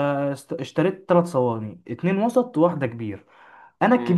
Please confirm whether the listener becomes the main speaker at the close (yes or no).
no